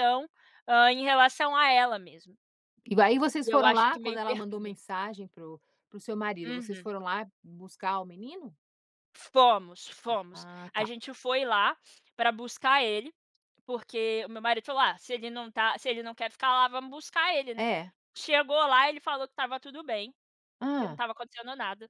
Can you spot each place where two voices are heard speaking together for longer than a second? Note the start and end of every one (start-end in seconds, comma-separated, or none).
3.4-4.8